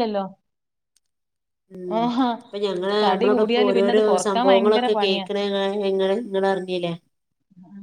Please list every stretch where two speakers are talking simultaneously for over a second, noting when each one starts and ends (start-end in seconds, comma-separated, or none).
3.0-5.2